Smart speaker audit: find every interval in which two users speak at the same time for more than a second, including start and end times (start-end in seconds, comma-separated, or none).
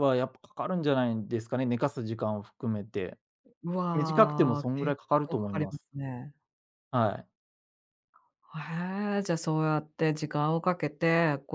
3.9-5.8